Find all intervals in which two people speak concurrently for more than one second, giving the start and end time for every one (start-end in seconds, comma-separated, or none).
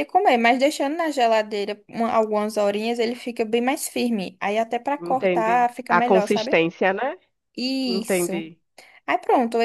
5.0-6.6